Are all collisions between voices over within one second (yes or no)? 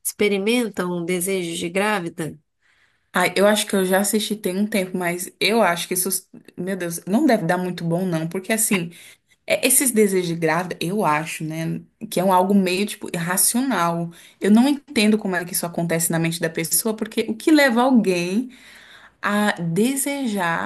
yes